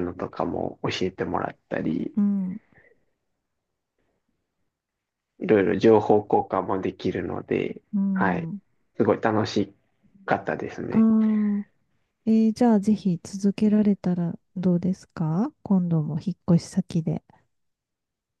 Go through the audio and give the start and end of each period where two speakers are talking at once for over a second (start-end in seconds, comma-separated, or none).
none